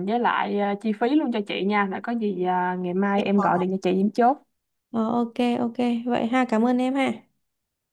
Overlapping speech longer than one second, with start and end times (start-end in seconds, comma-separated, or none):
none